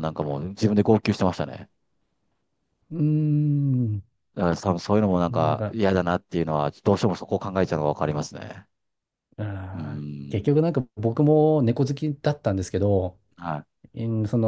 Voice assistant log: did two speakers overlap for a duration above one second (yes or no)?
no